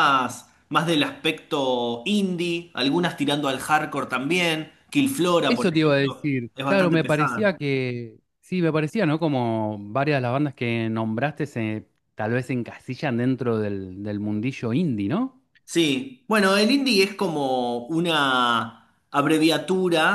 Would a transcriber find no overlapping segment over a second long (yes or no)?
no